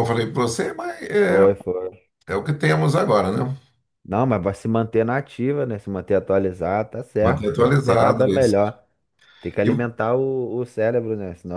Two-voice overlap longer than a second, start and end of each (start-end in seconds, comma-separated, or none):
7.2-8.7